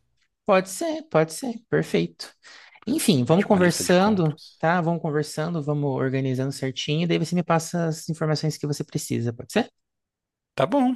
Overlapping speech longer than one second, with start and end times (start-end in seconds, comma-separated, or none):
3.3-4.6